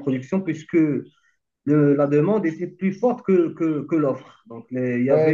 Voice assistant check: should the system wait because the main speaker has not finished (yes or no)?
no